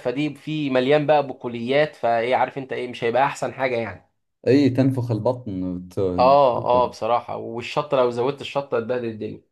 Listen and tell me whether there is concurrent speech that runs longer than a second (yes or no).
no